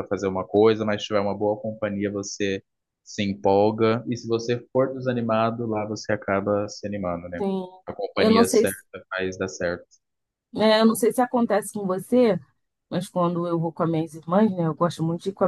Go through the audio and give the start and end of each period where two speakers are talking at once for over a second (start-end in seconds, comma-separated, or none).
none